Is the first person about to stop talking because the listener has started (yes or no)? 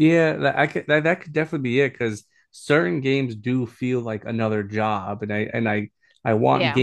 no